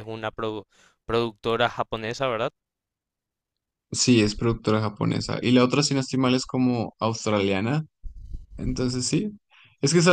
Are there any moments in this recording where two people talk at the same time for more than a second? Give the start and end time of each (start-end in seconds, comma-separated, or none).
none